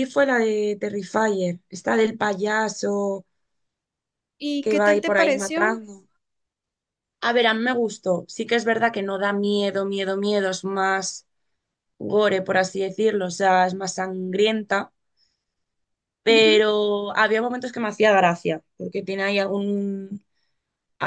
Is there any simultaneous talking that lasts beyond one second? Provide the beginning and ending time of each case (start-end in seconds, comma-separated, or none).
4.6-5.8